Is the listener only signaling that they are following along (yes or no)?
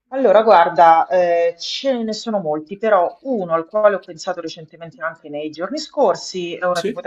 yes